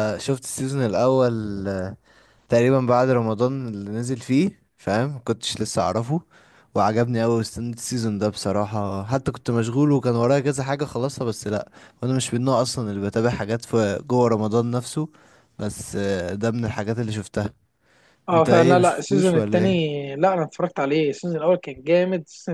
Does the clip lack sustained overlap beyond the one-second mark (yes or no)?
no